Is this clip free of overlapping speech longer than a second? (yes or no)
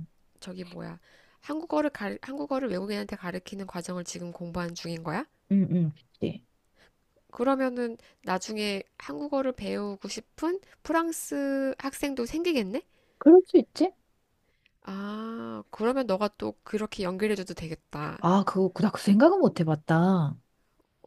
yes